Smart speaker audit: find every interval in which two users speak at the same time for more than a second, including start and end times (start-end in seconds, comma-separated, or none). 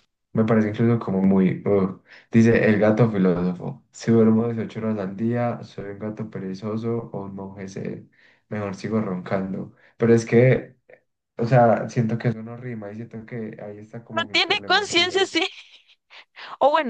14.1-15.4